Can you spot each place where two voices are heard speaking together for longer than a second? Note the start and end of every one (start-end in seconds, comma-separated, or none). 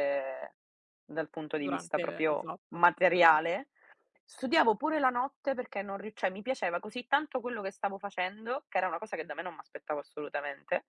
1.6-3.4